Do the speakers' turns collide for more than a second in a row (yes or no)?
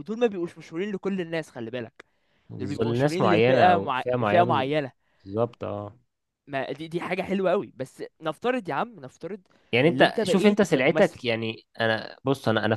yes